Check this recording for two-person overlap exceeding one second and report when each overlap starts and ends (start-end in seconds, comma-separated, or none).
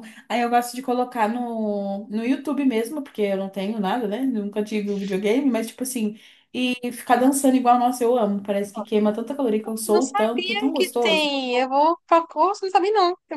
9.9-11.3